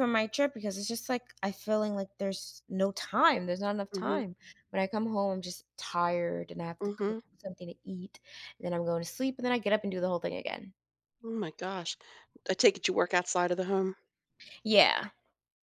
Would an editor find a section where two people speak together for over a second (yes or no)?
no